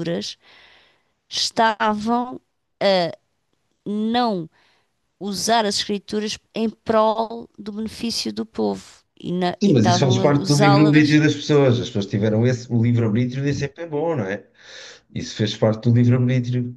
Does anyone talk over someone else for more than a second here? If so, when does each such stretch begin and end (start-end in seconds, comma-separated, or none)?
9.6-11.2